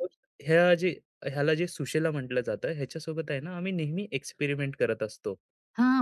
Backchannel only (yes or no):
no